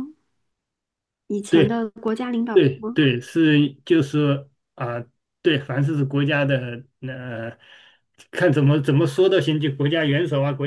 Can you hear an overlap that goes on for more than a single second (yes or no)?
no